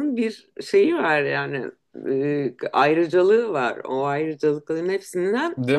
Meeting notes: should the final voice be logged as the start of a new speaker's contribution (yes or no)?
no